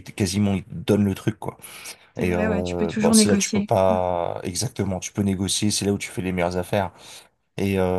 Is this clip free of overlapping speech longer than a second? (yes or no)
no